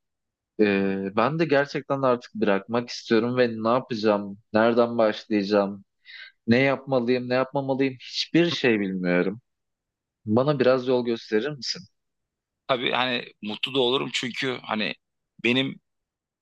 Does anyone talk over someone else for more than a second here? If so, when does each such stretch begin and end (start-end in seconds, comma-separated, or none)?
none